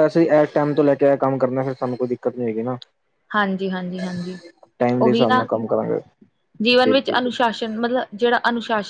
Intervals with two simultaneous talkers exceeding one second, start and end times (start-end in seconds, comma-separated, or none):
none